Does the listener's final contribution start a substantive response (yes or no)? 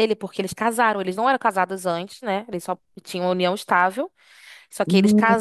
no